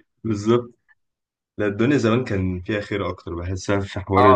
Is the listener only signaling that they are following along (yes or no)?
no